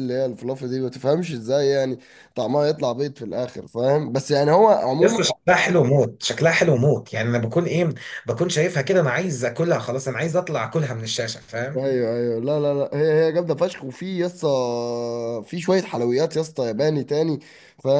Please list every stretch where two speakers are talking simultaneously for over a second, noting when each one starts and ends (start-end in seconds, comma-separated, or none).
none